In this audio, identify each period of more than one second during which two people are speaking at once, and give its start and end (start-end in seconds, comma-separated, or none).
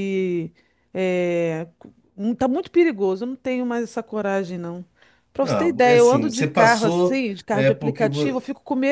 5.4-8.3